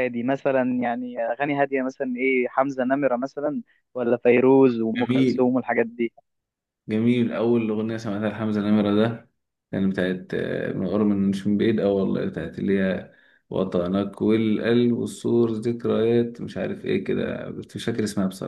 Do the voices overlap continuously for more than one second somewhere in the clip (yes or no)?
no